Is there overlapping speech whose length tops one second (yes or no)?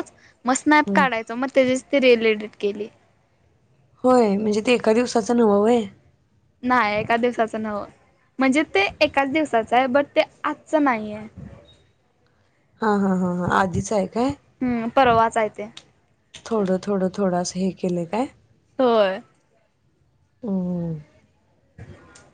no